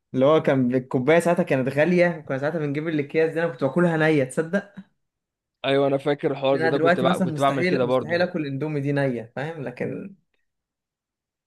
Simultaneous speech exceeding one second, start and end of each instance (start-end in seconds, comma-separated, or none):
6.5-8.2